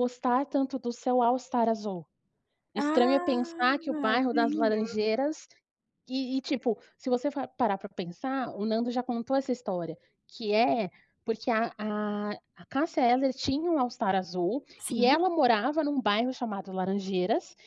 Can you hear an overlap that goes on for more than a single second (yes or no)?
yes